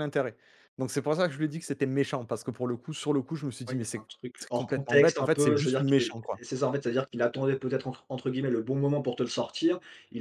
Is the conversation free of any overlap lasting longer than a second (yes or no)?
no